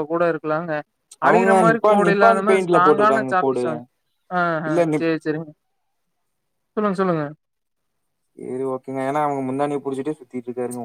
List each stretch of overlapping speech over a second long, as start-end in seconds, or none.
1.3-3.6